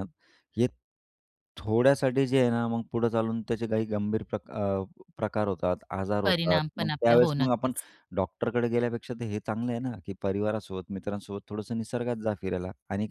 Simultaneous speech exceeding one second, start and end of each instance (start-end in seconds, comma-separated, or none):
6.2-7.7